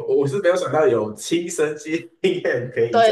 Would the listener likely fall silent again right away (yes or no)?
no